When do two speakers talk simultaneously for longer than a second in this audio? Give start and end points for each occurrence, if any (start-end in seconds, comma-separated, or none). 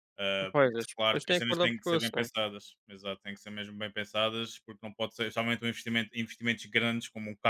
0.5-2.3